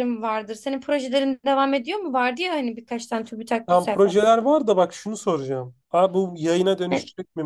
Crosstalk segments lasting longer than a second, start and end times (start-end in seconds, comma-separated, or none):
none